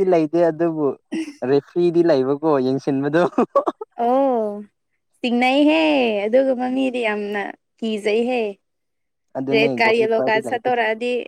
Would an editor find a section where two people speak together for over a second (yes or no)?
yes